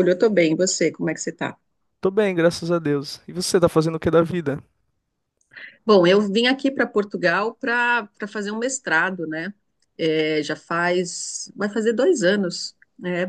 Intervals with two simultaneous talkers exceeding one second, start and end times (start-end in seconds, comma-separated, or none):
none